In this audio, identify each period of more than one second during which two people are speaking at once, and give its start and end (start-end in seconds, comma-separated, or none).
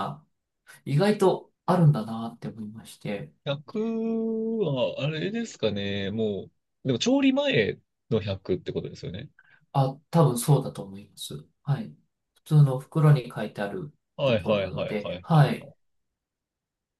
14.2-15.7